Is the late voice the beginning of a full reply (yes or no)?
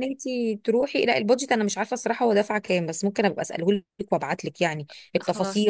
no